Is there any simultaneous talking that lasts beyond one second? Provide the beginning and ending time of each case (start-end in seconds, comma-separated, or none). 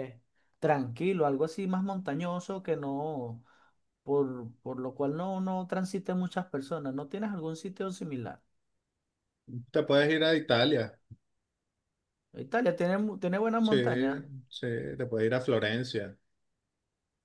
none